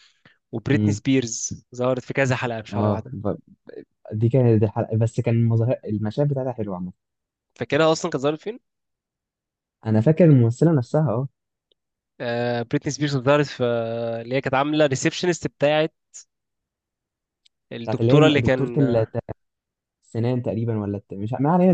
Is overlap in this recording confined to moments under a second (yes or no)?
no